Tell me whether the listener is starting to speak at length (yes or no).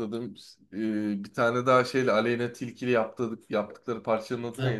yes